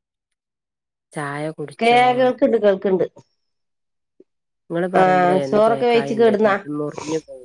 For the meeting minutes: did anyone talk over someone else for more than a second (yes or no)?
yes